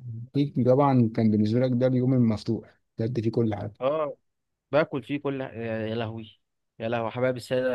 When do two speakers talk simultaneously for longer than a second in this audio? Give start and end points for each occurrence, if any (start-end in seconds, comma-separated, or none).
none